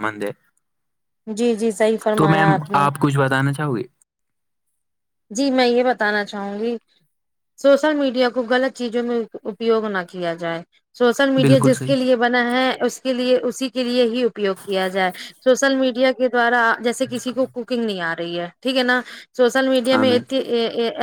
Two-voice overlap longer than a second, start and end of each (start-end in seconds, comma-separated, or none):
none